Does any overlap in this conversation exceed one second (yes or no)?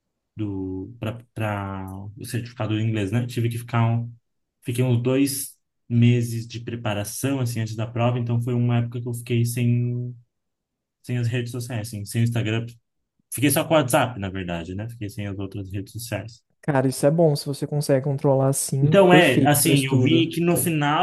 yes